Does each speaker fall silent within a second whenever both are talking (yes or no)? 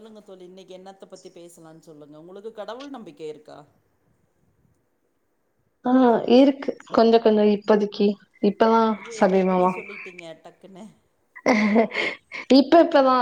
yes